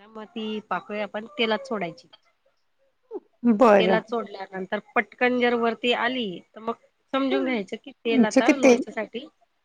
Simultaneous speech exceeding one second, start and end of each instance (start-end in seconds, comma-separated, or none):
7.3-8.7